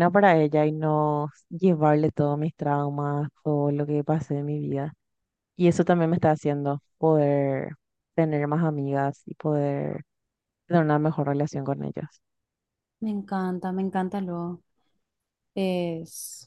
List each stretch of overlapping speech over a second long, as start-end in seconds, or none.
none